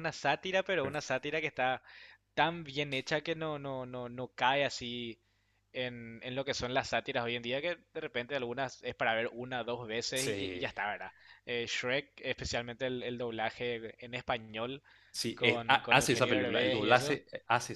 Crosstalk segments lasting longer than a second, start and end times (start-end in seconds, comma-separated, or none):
15.3-17.2